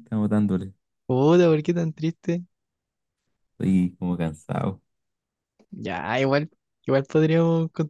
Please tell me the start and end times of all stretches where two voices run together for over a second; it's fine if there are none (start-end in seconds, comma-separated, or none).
none